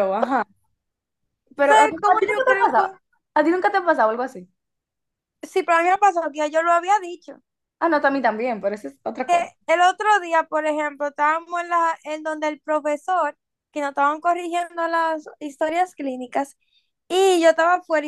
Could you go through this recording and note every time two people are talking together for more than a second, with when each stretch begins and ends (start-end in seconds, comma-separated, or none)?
1.6-2.9